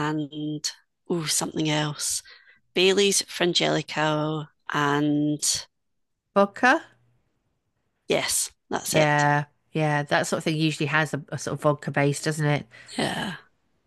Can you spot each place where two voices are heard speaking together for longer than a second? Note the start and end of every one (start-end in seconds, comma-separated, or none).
none